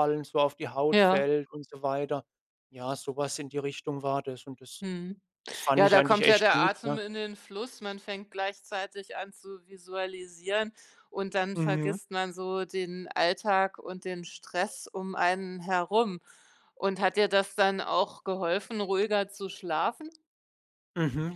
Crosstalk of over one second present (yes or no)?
yes